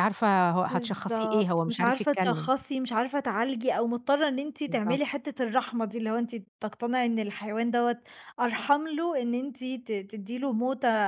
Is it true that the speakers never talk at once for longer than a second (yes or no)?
no